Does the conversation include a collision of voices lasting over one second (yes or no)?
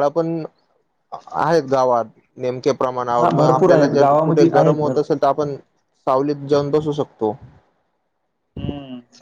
yes